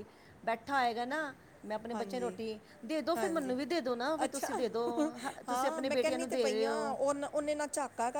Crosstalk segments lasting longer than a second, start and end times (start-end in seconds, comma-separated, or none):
5.5-7.0